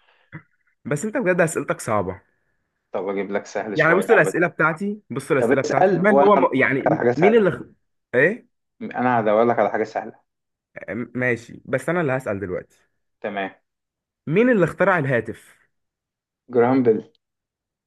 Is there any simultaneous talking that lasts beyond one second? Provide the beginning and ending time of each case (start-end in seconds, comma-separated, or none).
5.4-7.5